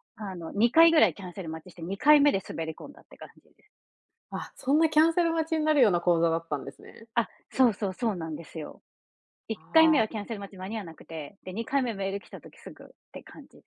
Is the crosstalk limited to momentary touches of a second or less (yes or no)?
yes